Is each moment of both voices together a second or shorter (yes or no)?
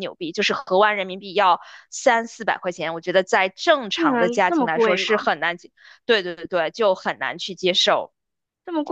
no